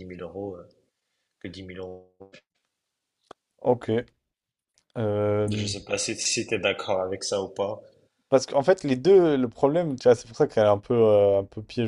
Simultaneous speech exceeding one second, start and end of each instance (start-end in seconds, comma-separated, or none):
none